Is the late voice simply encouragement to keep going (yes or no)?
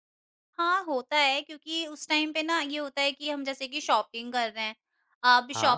yes